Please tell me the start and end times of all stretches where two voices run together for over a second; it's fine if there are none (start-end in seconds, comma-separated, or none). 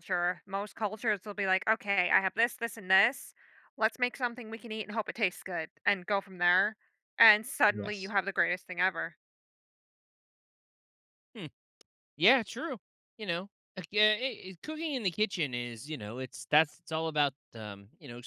none